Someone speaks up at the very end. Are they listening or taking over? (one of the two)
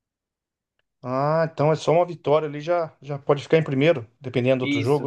taking over